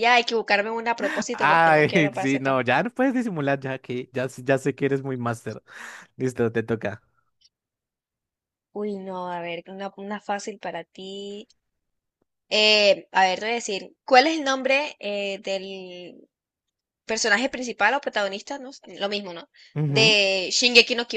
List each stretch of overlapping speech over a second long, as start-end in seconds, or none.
1.3-2.6